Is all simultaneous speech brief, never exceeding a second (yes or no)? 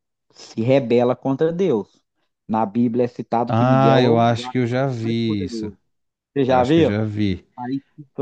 no